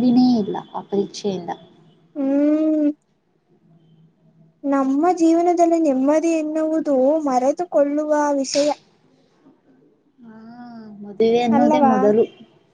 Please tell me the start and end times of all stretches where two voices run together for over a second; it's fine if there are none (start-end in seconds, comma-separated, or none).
none